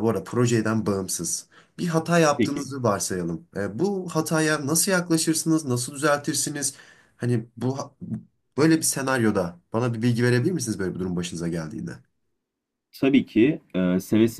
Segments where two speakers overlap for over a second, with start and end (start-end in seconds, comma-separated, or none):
none